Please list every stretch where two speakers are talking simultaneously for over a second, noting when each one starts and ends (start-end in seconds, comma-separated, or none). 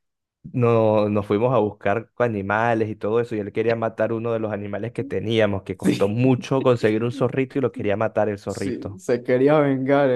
none